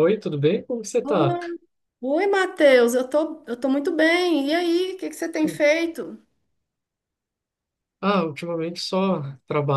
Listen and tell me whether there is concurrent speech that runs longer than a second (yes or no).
no